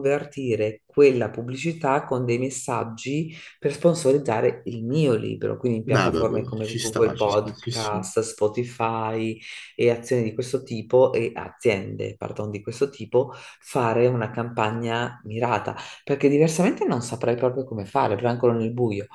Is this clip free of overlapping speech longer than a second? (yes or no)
no